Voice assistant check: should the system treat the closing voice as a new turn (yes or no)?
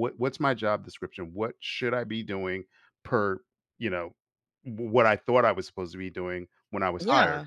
no